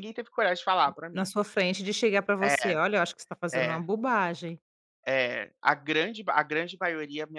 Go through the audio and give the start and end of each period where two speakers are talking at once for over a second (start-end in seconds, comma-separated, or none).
none